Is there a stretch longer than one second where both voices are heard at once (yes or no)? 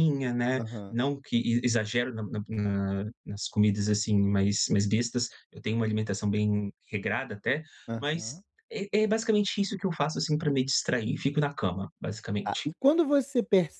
no